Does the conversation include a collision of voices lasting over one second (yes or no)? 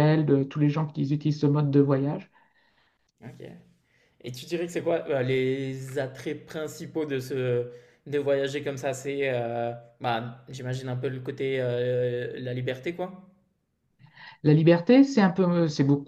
no